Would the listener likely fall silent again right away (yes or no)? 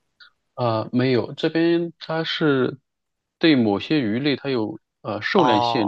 no